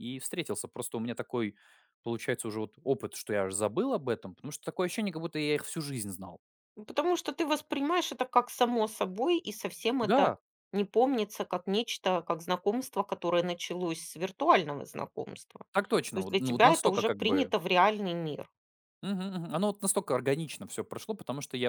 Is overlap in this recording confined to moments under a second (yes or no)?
no